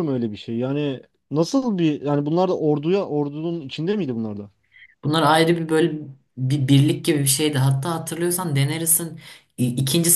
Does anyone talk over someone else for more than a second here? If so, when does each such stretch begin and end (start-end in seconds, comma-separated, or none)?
none